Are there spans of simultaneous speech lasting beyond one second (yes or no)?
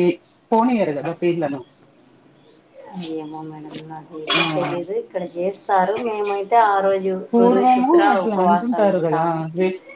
yes